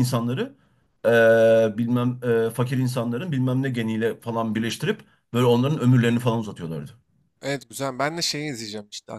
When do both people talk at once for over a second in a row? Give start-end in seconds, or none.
none